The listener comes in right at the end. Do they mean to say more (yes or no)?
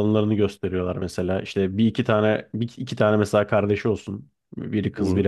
no